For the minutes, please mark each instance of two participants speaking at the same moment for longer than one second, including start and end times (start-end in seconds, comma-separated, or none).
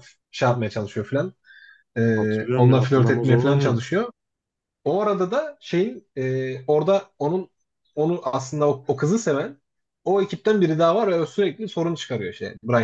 2.1-3.8